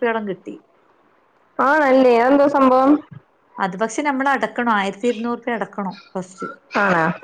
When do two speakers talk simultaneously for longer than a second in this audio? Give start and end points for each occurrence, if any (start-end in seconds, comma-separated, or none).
none